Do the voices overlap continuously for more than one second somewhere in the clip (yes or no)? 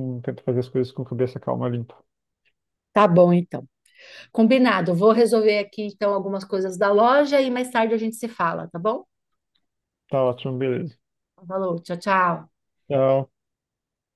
no